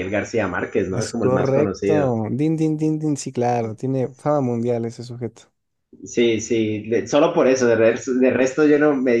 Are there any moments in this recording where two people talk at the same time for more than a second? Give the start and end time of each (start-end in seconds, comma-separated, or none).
0.9-2.1